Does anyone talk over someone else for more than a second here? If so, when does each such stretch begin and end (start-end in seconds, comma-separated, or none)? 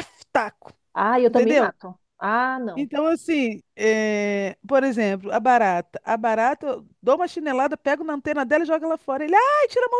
none